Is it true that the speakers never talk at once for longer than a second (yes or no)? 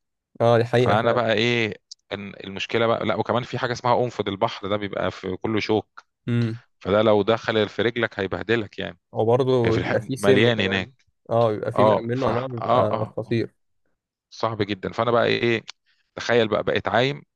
no